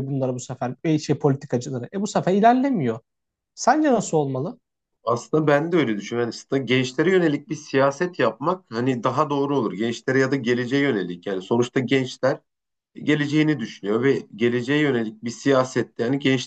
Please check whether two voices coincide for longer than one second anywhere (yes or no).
no